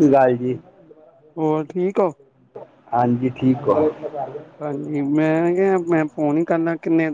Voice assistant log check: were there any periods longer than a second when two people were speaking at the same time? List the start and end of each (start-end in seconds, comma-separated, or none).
none